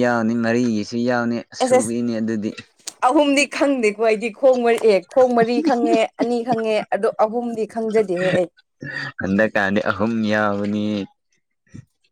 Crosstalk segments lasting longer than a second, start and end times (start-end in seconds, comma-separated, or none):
none